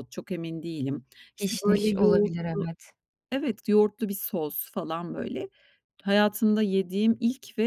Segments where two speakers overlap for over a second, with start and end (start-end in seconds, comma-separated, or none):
1.4-2.7